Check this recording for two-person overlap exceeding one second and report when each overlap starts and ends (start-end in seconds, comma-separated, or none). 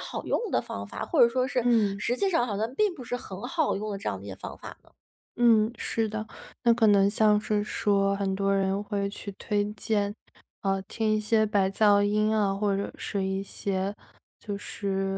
none